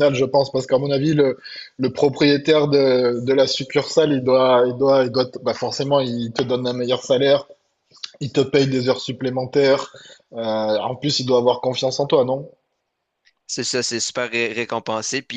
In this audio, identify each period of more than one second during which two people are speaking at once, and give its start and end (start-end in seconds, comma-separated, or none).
none